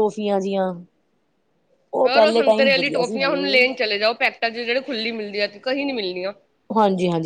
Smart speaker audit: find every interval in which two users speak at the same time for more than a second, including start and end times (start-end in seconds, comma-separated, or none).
2.1-3.9